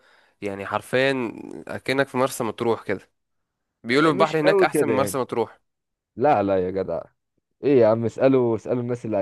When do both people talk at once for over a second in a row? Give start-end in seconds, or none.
3.9-5.2